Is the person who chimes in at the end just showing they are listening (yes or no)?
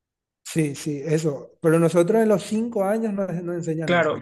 no